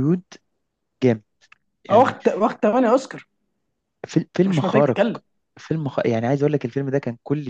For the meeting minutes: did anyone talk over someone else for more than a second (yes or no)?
no